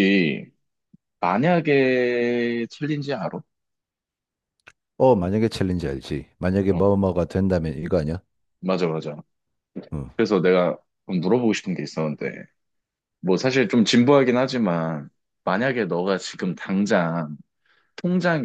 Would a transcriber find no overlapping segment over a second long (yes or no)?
yes